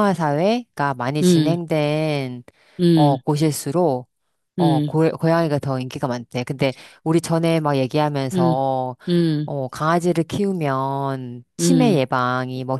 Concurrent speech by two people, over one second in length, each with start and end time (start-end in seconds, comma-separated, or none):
none